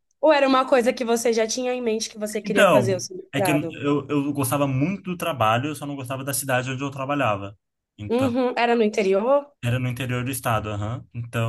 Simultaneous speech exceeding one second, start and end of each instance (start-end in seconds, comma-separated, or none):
2.4-3.8